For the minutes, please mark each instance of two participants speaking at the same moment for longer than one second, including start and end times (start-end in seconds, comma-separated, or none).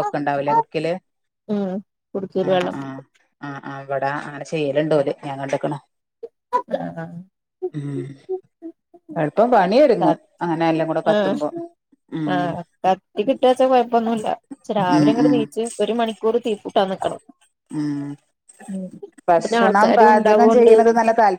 19.4-20.7